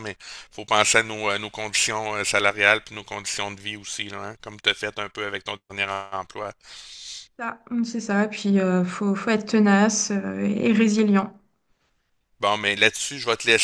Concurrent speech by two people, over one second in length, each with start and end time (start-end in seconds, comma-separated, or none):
none